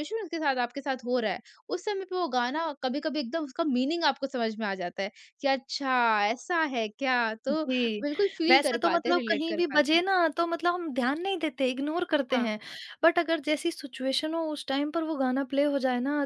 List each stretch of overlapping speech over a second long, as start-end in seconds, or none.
8.5-10.0